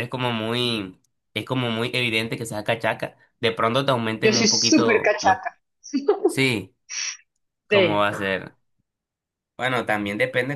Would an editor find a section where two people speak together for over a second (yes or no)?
yes